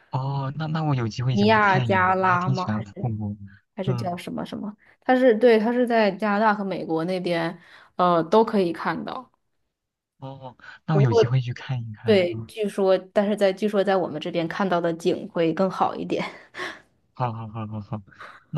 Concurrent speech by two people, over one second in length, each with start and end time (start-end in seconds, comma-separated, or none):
1.3-3.1